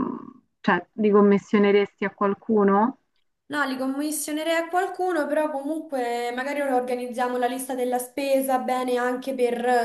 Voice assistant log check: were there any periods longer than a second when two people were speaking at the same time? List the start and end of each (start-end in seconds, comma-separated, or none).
none